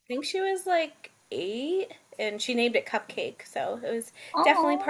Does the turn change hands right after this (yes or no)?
no